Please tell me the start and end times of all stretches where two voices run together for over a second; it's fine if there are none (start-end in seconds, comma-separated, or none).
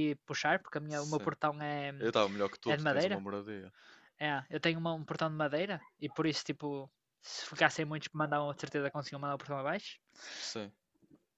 none